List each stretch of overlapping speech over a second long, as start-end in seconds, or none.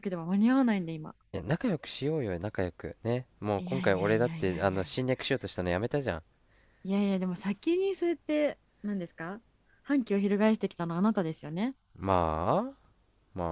3.6-5.0